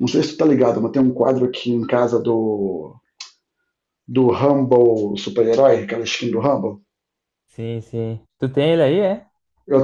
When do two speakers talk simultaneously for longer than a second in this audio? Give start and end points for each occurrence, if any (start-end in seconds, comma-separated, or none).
none